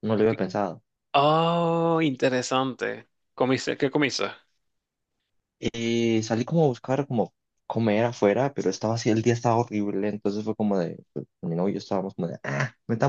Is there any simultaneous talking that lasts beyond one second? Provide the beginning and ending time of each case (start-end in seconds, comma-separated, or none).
none